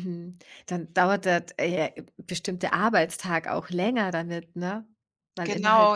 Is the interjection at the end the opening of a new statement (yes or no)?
yes